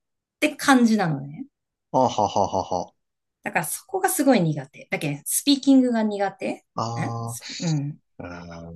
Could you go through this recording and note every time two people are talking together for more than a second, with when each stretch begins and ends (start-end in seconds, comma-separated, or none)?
none